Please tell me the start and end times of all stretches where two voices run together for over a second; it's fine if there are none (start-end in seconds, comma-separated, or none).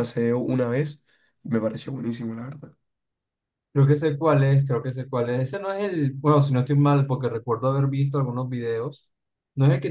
none